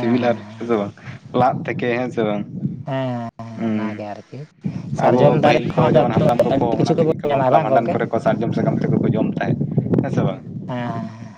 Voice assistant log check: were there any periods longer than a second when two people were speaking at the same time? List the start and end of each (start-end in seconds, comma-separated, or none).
5.1-7.9